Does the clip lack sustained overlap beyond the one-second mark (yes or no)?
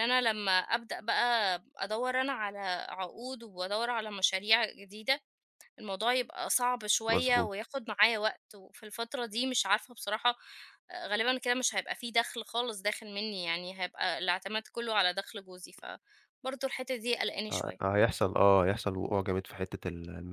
yes